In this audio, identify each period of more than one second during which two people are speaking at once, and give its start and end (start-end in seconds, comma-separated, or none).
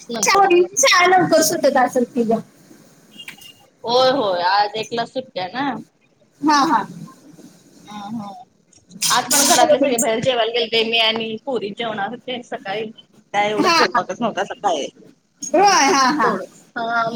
none